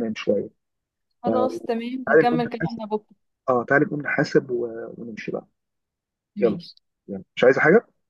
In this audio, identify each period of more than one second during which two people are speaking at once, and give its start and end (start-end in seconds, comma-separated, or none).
1.2-2.8